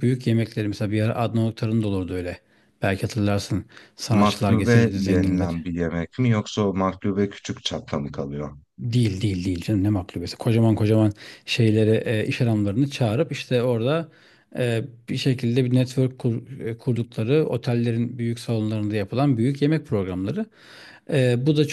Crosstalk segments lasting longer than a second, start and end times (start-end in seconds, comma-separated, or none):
4.1-5.5